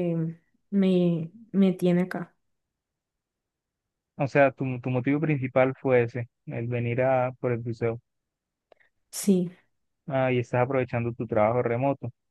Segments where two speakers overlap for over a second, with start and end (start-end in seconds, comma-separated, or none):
none